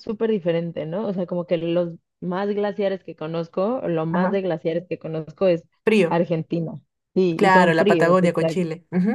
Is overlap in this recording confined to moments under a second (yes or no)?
no